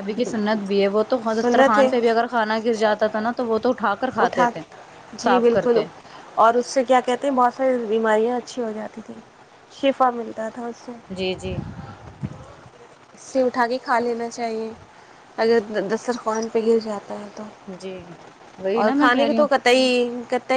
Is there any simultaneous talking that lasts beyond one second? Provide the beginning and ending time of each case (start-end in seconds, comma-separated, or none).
none